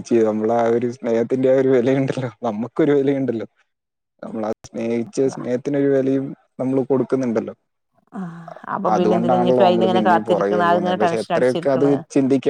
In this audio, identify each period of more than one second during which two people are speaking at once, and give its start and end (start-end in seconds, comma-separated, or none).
8.9-11.9